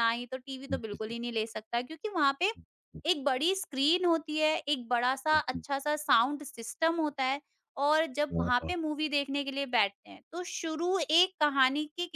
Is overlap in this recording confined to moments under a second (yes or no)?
yes